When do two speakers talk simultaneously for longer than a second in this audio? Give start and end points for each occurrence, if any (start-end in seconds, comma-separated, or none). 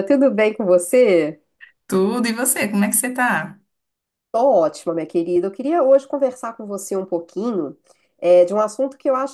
none